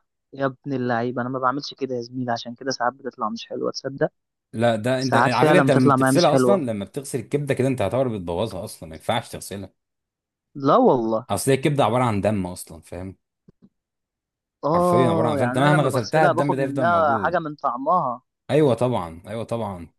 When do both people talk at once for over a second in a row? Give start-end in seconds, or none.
5.0-6.7, 14.7-17.4